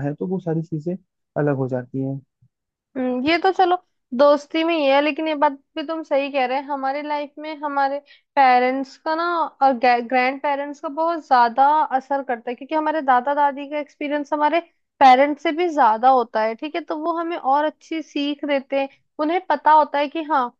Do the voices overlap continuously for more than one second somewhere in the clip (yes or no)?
no